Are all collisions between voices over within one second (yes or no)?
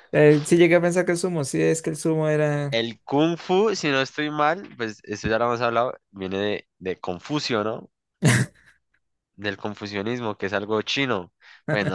yes